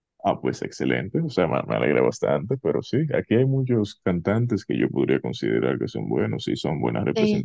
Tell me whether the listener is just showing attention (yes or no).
yes